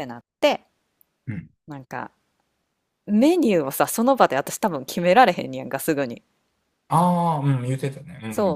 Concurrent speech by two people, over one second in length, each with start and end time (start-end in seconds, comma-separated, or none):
none